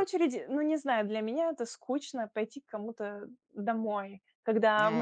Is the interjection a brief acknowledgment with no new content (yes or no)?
yes